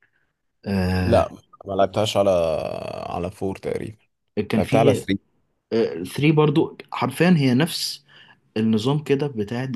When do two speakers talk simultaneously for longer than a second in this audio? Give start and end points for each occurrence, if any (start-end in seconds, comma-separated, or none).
none